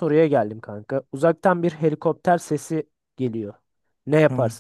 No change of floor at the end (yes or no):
yes